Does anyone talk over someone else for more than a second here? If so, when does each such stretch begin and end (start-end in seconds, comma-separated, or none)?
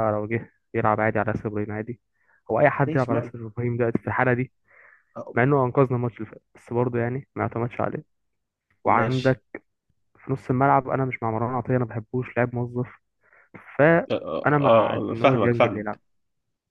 14.1-16.0